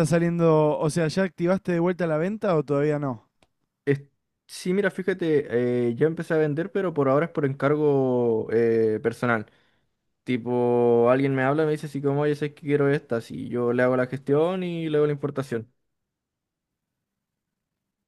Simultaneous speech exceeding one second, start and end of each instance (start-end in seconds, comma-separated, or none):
none